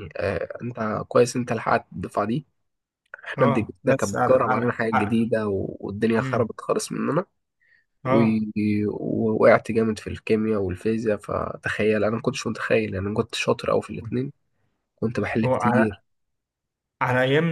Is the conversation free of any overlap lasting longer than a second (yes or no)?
no